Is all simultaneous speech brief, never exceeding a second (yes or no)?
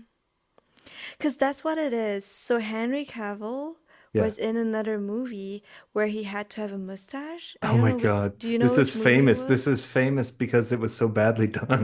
no